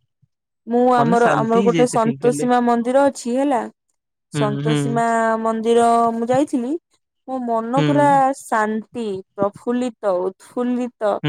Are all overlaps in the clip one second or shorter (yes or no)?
no